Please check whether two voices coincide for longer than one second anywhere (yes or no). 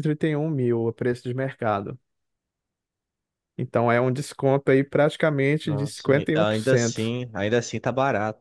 yes